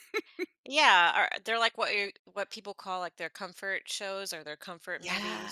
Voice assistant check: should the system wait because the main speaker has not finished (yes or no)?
no